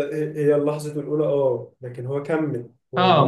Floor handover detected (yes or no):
yes